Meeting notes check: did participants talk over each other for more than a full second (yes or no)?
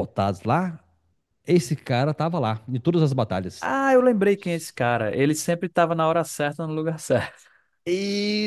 no